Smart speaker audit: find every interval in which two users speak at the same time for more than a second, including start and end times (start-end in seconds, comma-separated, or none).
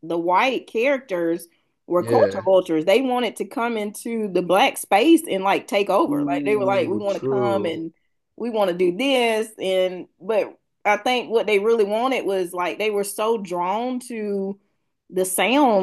6.1-7.8